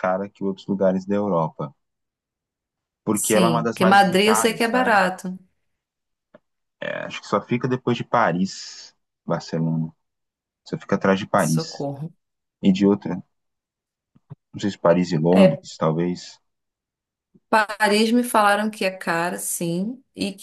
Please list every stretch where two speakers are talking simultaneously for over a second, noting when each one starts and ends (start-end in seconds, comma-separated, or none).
3.2-5.0